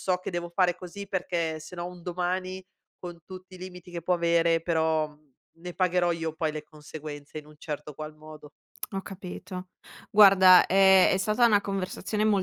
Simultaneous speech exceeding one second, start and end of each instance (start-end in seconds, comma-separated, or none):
none